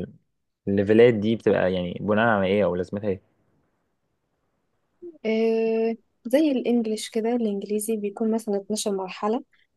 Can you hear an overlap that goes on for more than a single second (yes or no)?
no